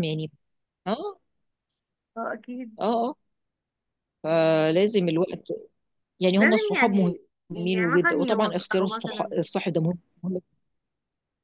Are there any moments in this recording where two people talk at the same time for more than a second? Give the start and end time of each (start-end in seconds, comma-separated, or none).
6.4-9.3